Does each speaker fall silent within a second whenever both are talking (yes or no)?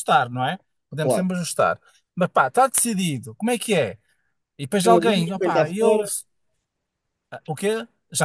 no